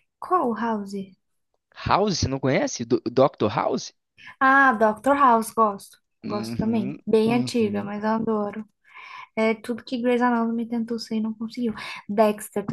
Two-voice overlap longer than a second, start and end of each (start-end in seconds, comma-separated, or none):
6.2-7.9